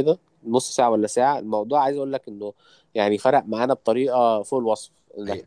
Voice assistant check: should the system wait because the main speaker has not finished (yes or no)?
yes